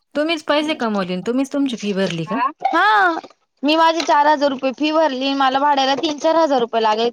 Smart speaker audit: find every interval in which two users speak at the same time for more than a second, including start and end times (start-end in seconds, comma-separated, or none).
none